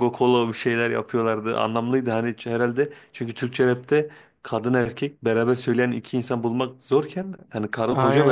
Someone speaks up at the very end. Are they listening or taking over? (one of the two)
taking over